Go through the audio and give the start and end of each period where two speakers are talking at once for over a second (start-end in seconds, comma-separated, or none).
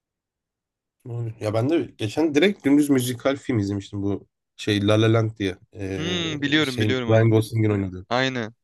6.0-7.4